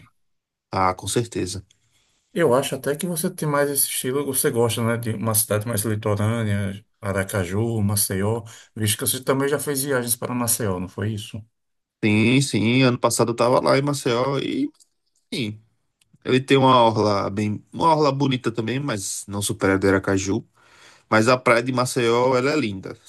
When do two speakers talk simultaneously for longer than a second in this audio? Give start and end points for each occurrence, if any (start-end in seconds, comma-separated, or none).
none